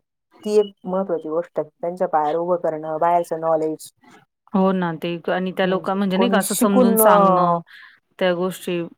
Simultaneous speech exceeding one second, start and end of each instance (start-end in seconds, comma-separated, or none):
5.6-7.1